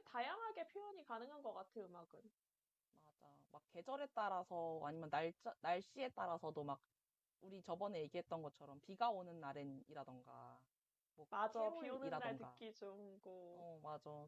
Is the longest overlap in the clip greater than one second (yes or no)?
yes